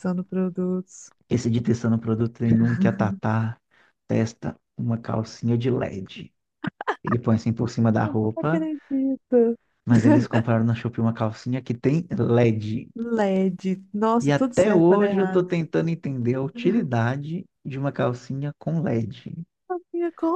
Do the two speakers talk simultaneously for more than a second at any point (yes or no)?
yes